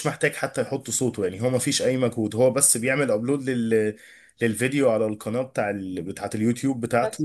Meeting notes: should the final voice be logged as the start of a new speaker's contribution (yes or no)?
no